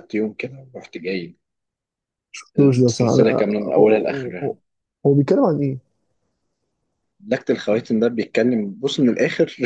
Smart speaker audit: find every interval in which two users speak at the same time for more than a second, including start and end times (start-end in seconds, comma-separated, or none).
2.6-4.6